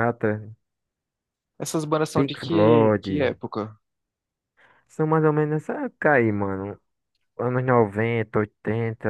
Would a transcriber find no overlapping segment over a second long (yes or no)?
no